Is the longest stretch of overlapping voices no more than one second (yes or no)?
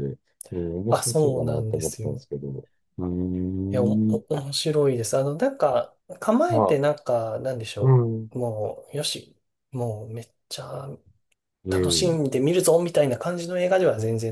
no